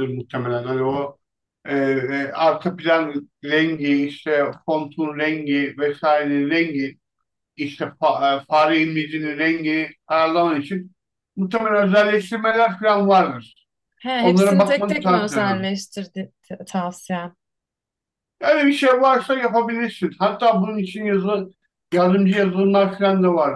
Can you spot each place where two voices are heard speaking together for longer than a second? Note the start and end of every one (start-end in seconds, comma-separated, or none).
14.2-15.7